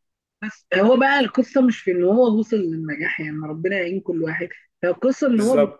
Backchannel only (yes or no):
yes